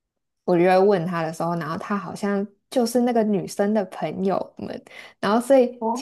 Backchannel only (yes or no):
yes